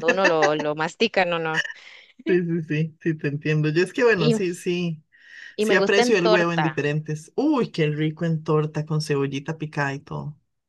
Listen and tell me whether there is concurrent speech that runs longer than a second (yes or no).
yes